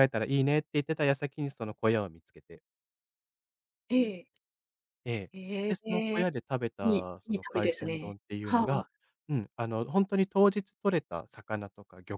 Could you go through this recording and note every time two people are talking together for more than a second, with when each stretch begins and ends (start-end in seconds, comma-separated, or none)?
6.8-8.9